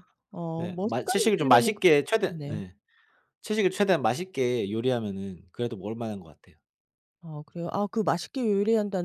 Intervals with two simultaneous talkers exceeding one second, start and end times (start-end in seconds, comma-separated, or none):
0.6-2.6